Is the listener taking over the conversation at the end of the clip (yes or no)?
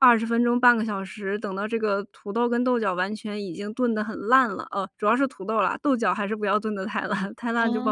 yes